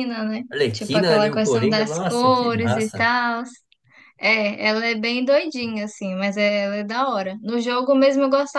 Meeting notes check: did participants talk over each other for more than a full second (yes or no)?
yes